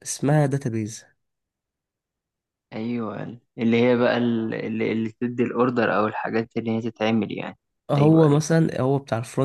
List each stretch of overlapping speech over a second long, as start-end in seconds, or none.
none